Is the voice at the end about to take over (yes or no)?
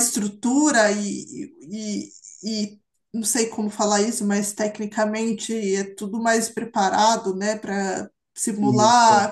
no